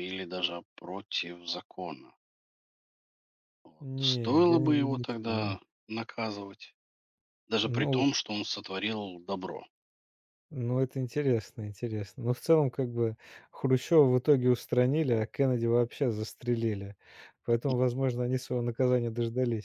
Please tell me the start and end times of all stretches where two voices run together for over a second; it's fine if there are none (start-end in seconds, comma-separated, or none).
3.8-5.6